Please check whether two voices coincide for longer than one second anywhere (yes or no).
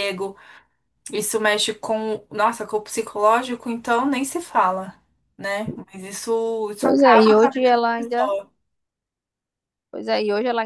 yes